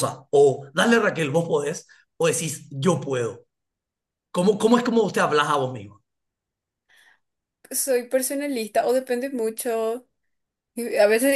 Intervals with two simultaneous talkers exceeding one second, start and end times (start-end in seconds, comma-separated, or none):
none